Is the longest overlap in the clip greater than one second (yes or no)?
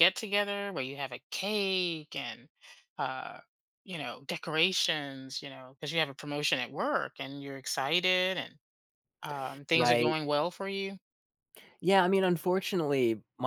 no